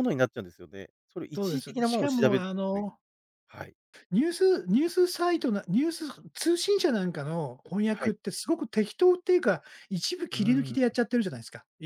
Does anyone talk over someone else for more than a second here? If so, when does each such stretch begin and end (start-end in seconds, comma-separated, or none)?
1.4-2.9